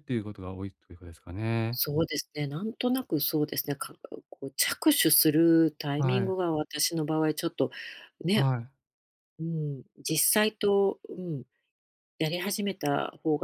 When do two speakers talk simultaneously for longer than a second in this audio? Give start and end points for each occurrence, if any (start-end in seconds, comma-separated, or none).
none